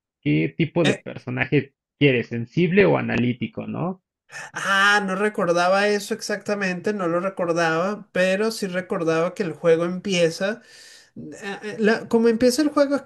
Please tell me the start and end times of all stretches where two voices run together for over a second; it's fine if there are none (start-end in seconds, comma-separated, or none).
none